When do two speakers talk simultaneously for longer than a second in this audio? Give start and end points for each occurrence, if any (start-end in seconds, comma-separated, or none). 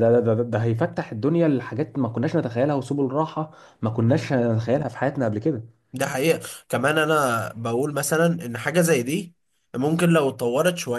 none